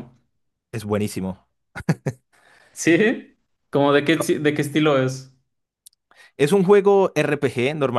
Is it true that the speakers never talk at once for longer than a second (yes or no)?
yes